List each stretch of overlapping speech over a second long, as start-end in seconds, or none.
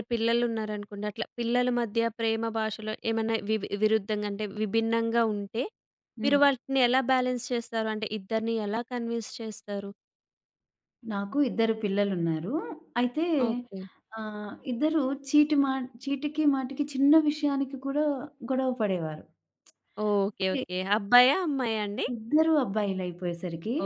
none